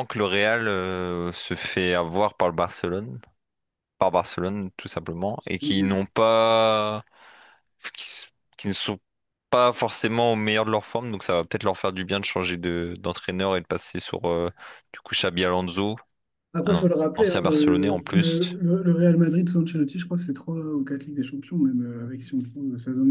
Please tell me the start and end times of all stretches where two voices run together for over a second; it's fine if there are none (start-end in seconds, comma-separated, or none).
16.6-18.6